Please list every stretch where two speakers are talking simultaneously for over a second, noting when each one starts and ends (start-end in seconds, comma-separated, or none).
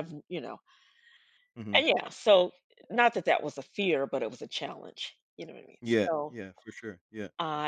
none